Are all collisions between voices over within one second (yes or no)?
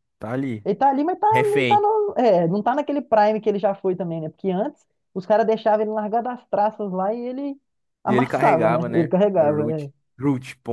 no